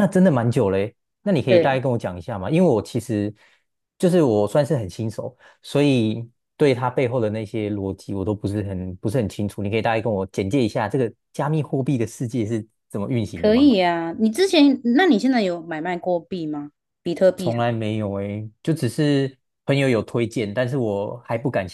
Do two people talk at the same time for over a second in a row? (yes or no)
no